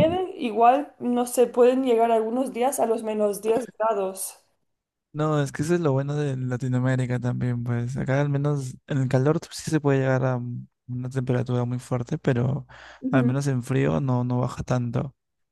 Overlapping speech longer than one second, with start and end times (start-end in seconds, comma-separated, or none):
none